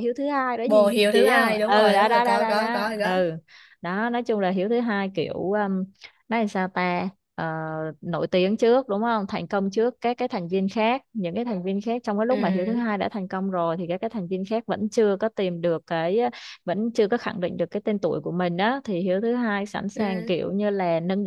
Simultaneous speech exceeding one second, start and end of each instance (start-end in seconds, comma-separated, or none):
0.7-3.1